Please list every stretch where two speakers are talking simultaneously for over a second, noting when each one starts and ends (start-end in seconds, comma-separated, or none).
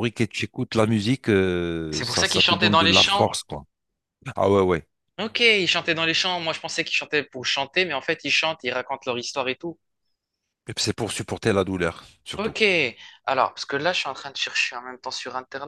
1.9-3.4